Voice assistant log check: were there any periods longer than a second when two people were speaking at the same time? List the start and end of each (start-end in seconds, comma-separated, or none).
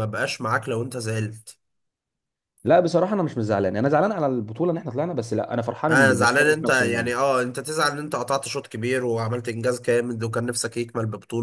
5.9-7.1